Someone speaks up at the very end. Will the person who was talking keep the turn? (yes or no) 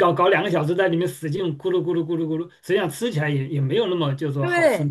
no